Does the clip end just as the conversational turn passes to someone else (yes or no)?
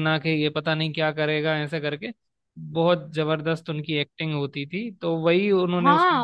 yes